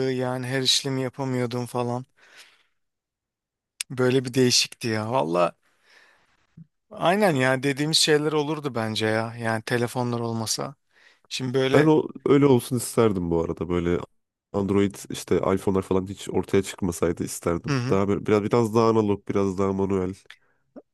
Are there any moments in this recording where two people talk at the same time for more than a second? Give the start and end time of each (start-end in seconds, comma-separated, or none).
none